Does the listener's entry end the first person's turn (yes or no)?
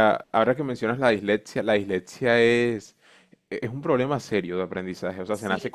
yes